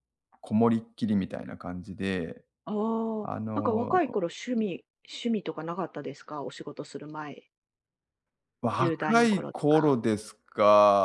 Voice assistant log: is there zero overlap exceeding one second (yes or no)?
no